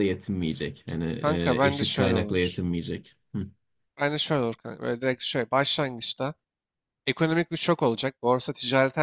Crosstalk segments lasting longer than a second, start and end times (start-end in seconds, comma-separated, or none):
1.2-2.6